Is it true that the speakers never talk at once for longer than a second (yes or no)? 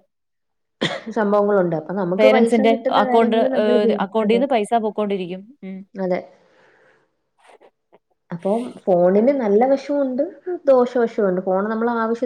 no